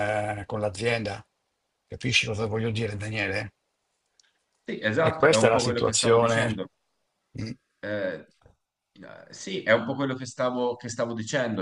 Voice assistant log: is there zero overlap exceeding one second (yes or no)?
no